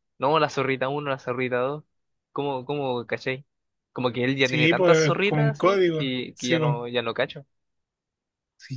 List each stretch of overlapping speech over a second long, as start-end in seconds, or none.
4.4-6.8